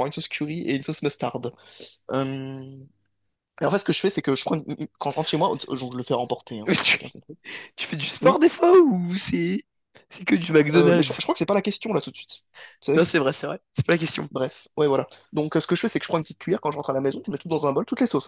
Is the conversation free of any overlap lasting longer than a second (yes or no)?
yes